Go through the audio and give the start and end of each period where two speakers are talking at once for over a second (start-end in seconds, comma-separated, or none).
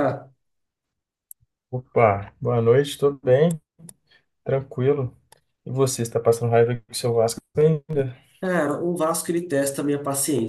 none